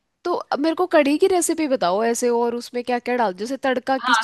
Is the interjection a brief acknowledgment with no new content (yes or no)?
no